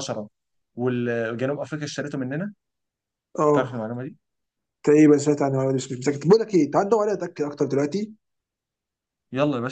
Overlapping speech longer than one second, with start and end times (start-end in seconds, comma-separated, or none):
none